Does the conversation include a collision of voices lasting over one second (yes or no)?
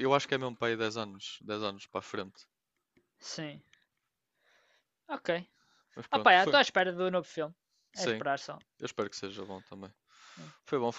no